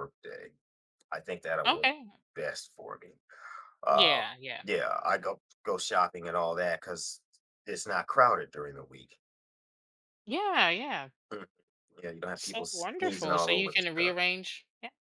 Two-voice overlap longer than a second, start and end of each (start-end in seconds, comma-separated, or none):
12.4-14.1